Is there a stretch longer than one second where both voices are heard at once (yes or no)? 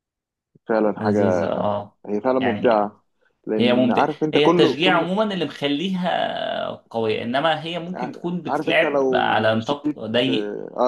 yes